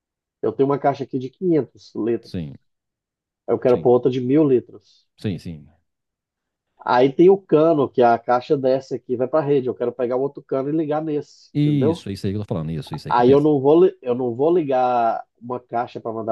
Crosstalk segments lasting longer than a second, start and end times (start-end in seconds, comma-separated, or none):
none